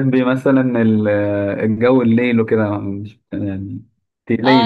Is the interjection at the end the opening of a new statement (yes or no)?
yes